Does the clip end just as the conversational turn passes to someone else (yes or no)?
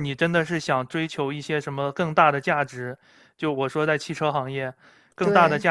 no